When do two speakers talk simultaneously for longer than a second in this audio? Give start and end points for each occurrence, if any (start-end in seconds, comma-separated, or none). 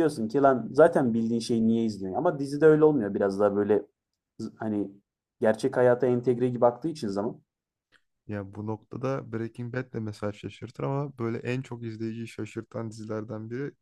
none